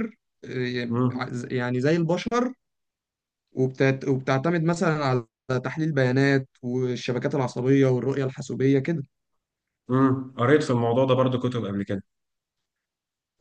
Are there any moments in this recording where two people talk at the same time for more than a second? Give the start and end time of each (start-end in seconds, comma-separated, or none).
none